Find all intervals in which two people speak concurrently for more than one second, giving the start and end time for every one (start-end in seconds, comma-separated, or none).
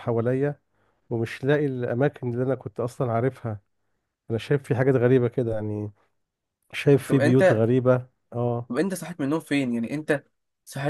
none